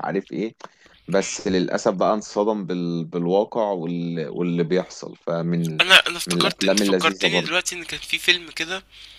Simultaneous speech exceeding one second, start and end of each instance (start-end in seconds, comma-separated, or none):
6.3-7.6